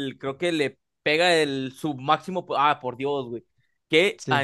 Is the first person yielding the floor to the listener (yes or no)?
no